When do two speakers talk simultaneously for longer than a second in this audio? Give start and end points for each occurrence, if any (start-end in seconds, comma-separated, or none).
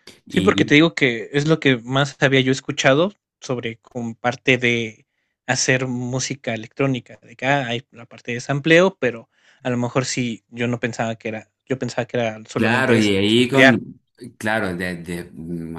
12.6-13.8